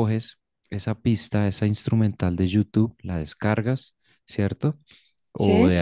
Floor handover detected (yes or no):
no